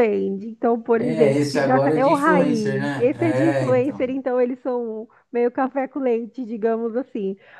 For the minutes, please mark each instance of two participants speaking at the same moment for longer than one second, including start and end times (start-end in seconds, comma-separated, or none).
1.0-4.1